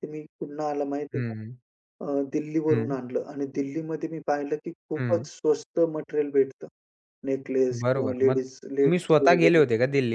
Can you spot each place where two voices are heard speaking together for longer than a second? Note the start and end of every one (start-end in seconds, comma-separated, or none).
7.8-9.6